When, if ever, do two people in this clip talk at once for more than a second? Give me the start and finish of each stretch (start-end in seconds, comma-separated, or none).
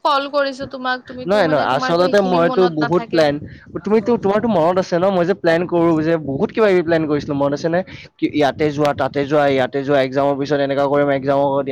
1.3-3.2